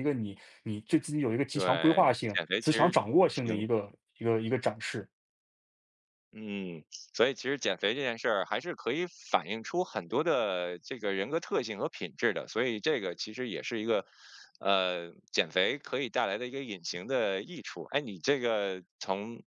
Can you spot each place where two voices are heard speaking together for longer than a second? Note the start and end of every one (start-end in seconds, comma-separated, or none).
1.5-3.7